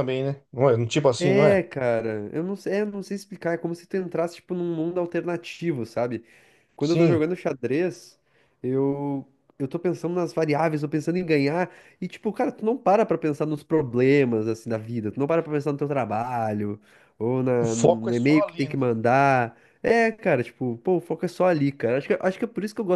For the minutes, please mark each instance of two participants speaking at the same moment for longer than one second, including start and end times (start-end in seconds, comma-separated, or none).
17.6-18.8